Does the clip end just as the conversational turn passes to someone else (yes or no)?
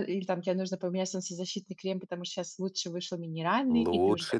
yes